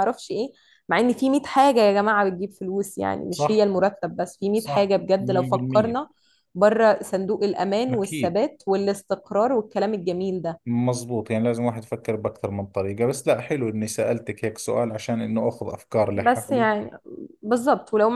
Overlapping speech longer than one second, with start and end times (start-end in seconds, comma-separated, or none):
4.5-6.0